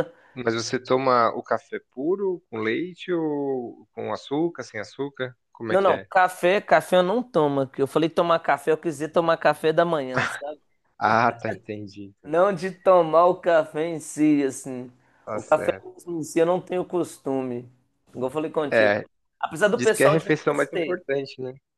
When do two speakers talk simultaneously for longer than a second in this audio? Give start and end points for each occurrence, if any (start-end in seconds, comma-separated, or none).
19.7-21.0